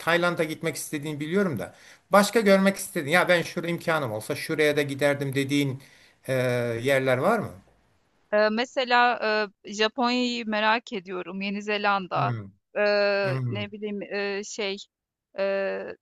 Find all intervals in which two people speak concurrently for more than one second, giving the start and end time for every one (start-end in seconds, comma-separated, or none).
none